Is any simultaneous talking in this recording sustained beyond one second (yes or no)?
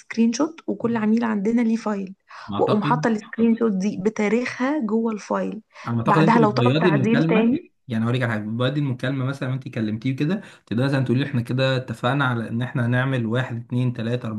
yes